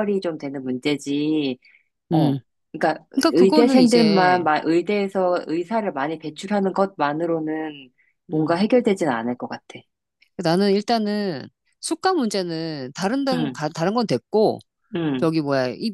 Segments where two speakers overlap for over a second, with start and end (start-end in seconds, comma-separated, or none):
3.1-4.5